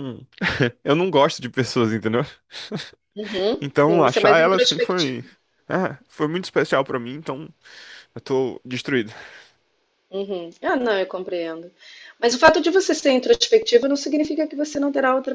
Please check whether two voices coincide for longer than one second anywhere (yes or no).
yes